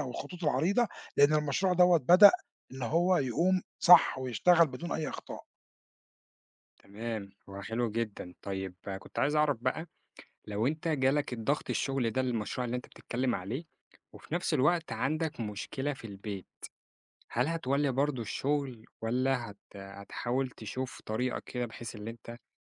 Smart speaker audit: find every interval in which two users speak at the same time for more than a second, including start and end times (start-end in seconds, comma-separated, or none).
none